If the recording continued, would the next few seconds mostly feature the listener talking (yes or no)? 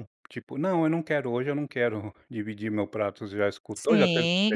yes